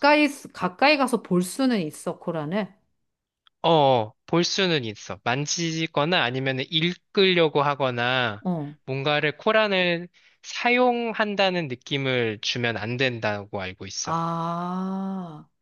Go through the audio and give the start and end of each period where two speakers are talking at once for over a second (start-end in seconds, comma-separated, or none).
none